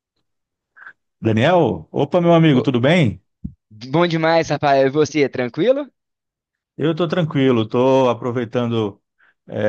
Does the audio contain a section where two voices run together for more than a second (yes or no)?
no